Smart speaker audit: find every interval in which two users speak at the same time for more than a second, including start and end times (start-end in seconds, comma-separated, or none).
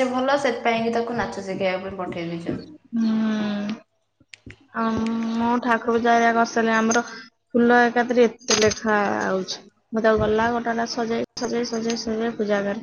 none